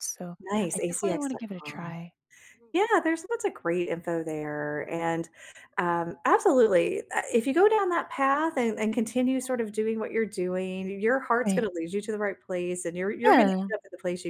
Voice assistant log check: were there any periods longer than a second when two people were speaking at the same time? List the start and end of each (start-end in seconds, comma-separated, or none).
0.7-2.0